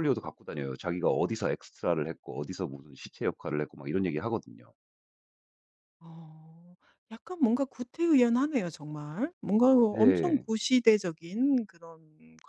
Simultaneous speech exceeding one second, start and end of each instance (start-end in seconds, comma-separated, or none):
none